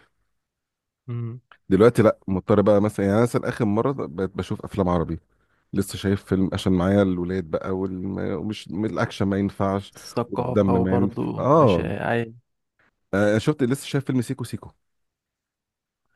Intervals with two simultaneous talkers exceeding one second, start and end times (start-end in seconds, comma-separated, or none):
9.9-11.9